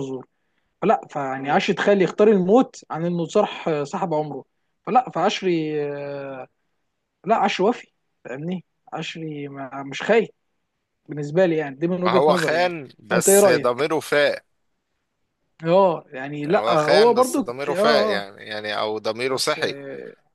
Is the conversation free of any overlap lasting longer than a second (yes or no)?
no